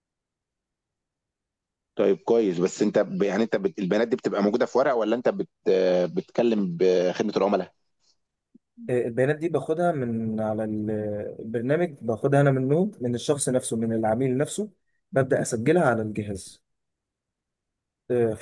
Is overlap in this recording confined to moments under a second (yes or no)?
yes